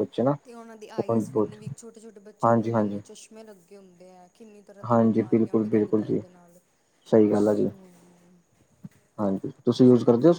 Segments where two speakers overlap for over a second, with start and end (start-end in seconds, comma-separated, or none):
4.9-6.2